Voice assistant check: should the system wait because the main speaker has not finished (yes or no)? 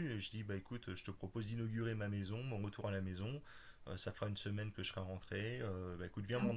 yes